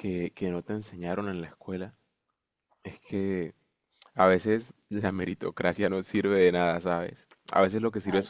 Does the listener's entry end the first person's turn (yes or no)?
no